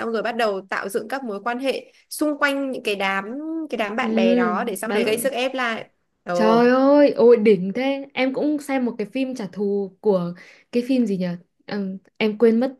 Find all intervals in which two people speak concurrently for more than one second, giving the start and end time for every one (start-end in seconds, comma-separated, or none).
4.0-5.3